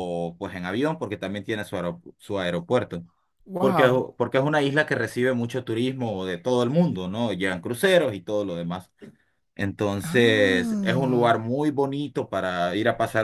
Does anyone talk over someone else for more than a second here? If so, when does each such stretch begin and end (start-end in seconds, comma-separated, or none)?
10.0-11.4